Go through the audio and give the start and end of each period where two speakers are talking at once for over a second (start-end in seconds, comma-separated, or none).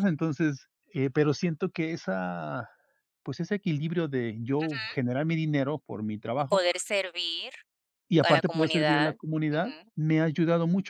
8.2-9.9